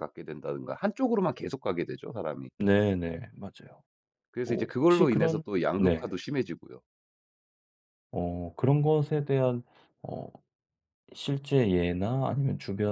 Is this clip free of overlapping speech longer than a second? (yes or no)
no